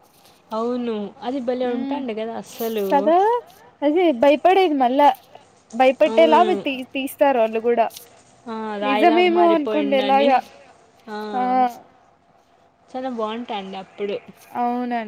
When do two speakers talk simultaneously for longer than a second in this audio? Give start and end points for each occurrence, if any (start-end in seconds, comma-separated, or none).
8.9-10.3